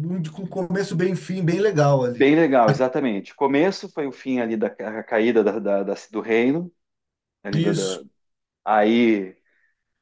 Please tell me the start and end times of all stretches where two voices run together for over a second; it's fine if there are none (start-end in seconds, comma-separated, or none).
none